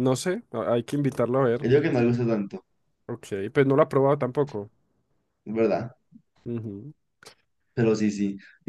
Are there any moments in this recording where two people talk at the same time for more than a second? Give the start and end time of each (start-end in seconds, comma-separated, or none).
none